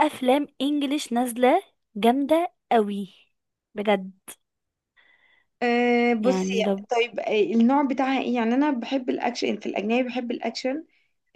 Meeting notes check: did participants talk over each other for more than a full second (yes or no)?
no